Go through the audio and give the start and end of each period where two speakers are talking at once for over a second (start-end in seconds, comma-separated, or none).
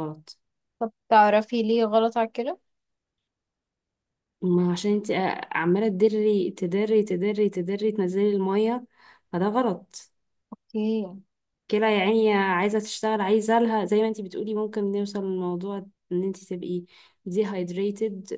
none